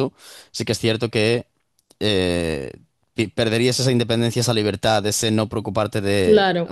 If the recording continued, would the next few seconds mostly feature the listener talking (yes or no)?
no